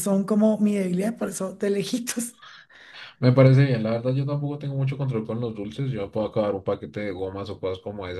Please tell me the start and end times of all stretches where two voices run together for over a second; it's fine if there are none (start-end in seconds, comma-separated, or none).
none